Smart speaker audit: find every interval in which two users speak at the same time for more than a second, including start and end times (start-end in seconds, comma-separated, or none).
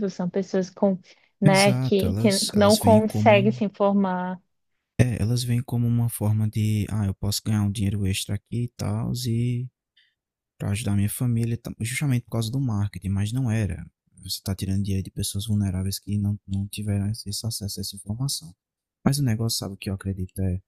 1.4-3.6